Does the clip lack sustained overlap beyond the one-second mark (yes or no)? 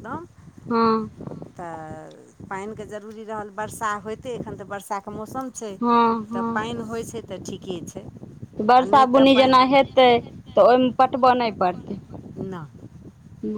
no